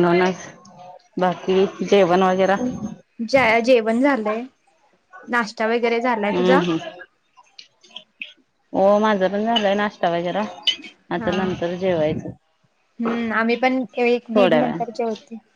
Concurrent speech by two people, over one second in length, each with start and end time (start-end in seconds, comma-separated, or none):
none